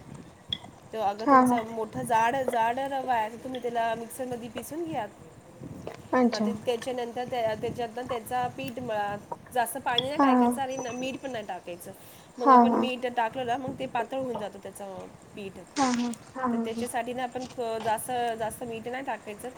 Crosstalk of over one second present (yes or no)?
no